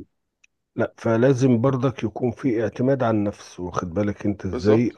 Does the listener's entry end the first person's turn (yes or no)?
no